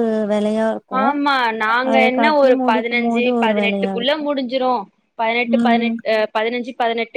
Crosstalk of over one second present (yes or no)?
yes